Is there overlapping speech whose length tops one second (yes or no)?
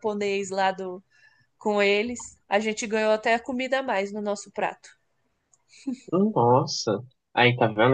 no